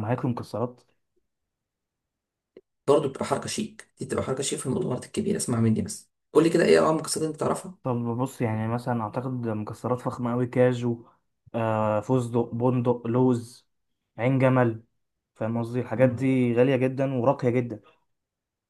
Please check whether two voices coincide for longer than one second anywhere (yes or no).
no